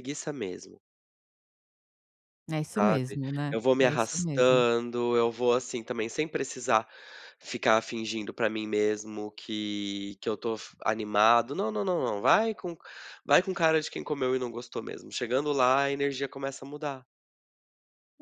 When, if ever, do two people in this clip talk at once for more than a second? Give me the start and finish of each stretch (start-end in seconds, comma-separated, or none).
2.8-4.6